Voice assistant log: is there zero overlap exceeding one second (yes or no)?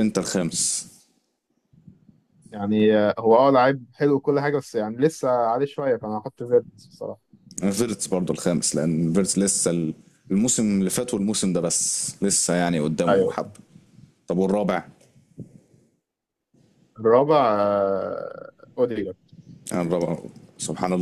yes